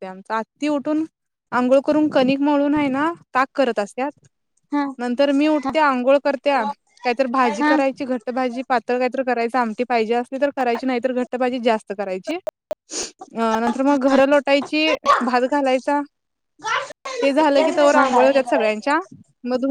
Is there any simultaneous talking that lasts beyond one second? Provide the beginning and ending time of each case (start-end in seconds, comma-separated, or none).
17.6-18.9